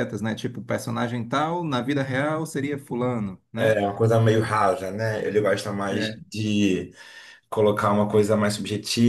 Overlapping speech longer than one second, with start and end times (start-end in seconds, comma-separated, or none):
none